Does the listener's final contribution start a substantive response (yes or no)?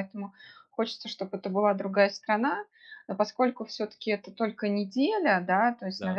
no